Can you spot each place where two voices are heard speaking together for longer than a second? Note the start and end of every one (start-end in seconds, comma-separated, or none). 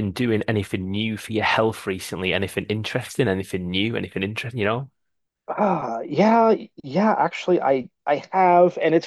none